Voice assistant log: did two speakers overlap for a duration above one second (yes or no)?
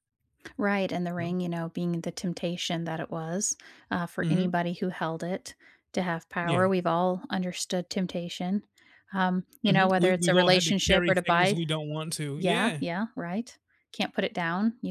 yes